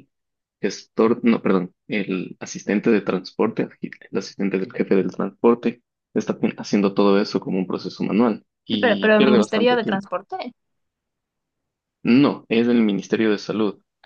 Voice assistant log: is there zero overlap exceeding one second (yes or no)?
no